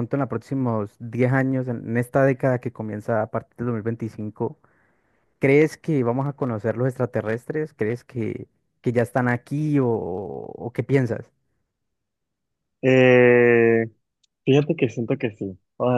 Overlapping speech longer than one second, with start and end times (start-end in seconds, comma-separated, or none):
none